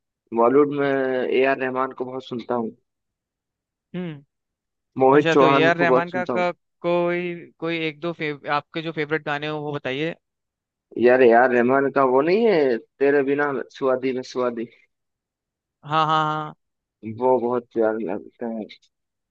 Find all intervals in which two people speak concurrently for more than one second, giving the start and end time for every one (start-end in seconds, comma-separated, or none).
5.2-6.4